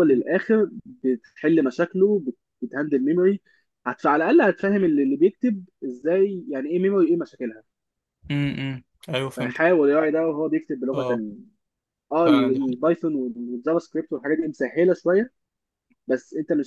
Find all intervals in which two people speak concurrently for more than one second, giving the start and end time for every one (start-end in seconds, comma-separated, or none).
none